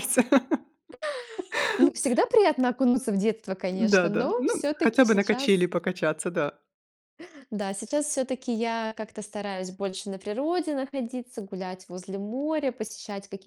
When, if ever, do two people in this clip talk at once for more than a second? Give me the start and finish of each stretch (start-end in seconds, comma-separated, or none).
3.7-5.6